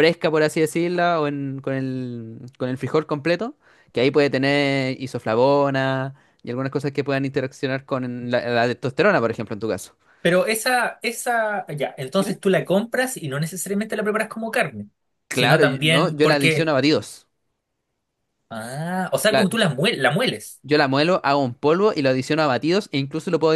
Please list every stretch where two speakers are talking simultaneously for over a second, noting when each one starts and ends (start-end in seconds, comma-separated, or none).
15.3-16.8